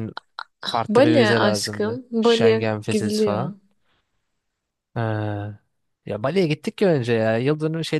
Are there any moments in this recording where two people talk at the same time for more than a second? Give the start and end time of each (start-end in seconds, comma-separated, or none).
0.9-3.5